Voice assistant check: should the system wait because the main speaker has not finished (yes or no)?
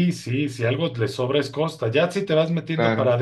yes